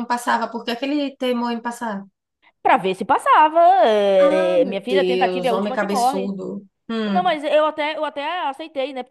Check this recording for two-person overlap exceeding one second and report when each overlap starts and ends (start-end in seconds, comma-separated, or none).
4.2-6.3